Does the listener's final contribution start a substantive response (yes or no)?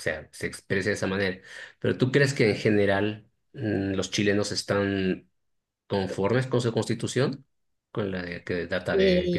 yes